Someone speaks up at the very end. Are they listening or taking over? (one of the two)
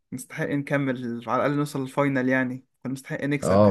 taking over